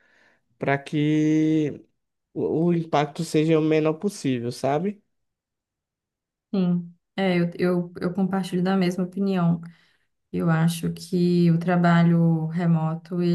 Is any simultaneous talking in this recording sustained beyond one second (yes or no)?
no